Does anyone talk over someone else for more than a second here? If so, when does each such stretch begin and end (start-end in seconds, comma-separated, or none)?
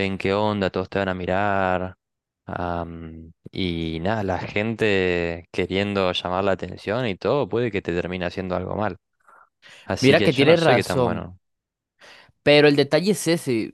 10.0-11.3